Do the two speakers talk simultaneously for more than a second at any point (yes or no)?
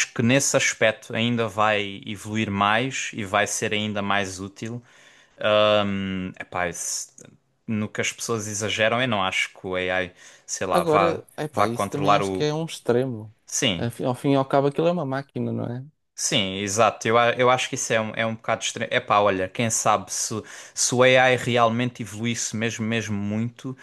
yes